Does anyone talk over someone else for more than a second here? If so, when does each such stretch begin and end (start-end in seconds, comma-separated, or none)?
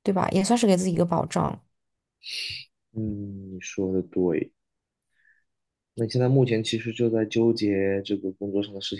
none